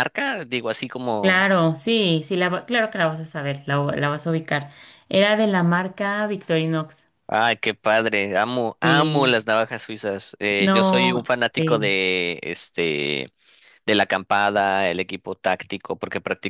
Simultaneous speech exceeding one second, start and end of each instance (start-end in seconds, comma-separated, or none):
10.6-12.0